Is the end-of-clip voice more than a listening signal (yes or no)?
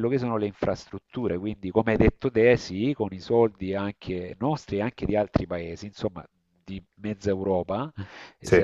no